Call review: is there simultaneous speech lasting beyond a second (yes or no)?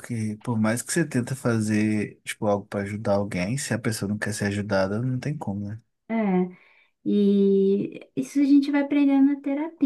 no